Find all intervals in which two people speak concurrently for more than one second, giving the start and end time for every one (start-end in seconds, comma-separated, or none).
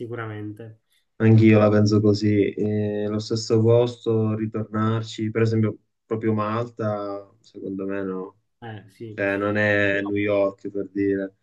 none